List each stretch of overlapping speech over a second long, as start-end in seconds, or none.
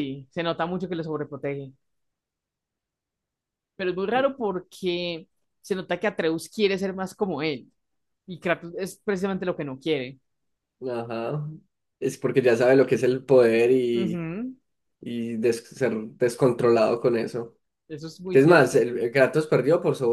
none